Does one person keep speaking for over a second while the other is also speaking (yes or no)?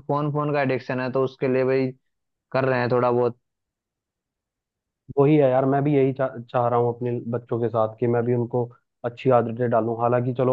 no